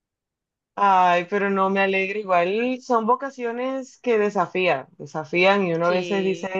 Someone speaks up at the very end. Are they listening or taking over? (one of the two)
listening